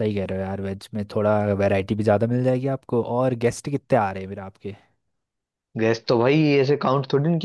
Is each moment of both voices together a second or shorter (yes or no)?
yes